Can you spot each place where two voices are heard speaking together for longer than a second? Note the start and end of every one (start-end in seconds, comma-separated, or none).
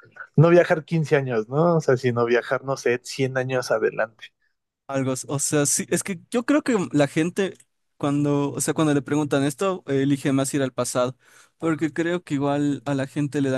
none